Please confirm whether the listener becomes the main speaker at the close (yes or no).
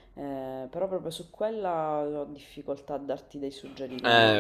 yes